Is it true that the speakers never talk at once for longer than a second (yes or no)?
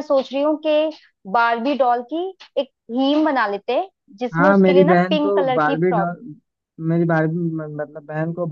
no